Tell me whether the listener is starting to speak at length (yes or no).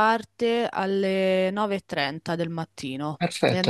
yes